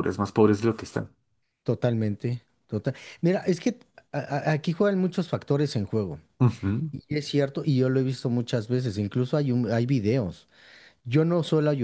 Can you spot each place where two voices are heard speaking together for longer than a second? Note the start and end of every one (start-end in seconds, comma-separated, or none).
none